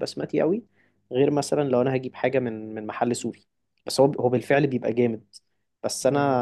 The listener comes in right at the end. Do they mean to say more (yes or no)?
no